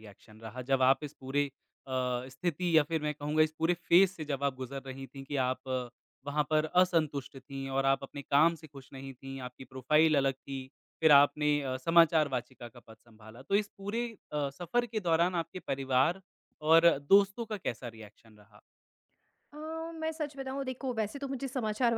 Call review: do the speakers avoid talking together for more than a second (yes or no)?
yes